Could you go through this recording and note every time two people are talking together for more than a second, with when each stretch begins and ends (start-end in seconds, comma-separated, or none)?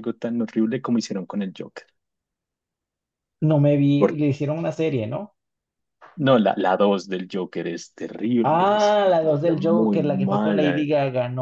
8.4-10.8